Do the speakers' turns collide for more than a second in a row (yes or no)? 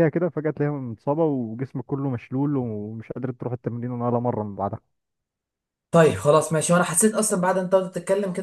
no